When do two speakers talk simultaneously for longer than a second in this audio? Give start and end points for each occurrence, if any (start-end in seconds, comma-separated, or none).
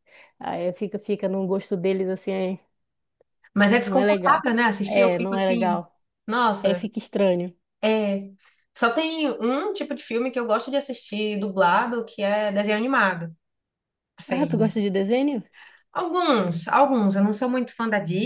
3.8-5.8